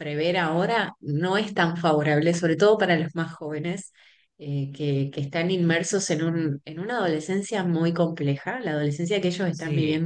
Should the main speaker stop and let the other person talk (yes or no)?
no